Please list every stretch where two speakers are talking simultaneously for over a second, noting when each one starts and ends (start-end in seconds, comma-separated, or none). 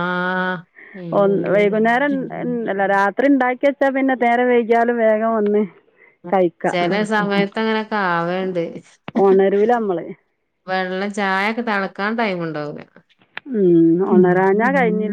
none